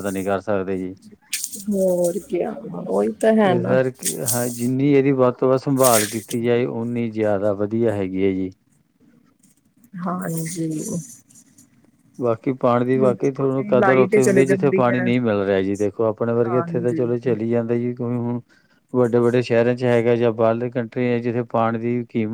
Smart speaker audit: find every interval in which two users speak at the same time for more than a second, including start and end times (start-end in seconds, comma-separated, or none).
13.0-15.1